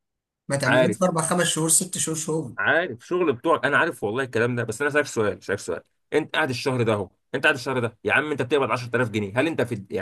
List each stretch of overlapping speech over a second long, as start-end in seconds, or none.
none